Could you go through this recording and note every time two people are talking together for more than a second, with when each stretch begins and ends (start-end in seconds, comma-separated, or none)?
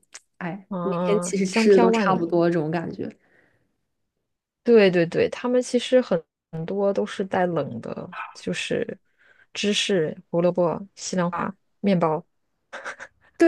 0.7-2.4